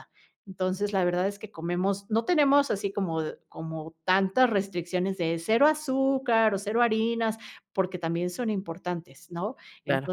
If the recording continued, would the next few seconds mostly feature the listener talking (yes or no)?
no